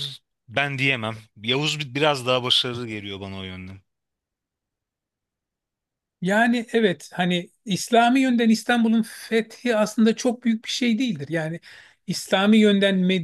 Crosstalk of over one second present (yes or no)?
no